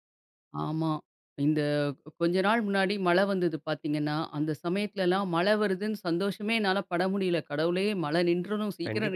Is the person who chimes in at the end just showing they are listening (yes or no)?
no